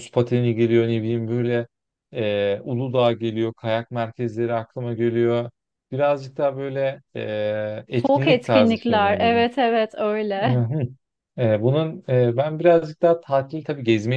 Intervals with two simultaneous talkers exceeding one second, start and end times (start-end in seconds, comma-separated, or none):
7.9-9.4